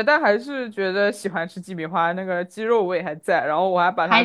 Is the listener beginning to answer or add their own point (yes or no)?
no